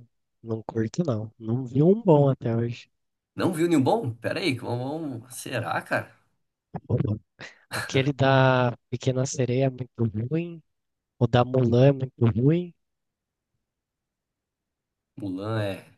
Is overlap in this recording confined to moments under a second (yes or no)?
yes